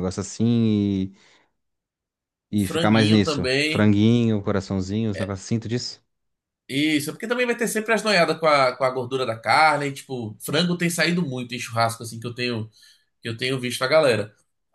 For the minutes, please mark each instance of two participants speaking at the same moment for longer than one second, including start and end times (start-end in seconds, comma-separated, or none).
2.5-3.9